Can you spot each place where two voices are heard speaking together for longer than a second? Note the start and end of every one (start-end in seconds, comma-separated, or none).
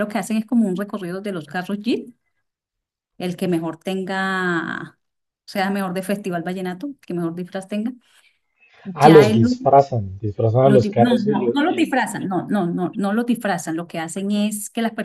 10.6-12.0